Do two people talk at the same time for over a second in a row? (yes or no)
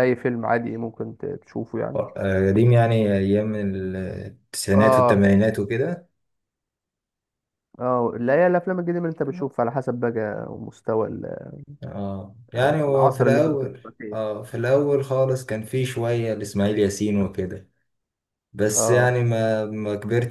yes